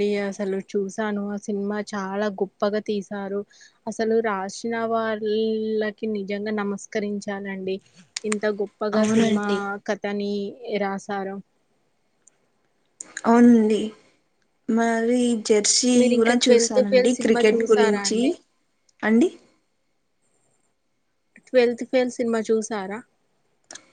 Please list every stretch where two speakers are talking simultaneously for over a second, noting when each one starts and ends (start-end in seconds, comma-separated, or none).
16.0-18.2